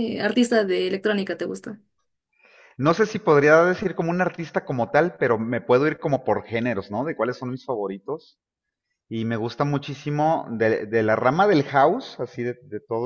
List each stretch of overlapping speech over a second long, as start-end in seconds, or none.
none